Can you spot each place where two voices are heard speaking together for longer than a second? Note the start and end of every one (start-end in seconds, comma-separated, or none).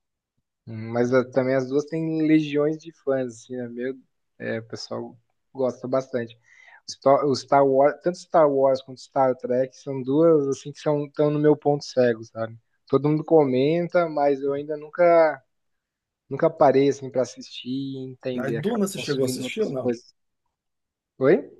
18.3-20.0